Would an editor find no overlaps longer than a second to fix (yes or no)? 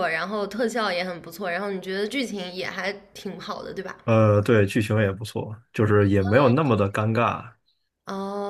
yes